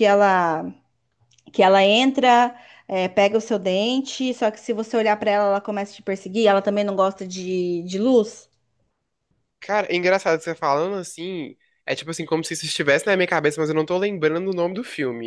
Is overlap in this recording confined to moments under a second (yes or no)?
yes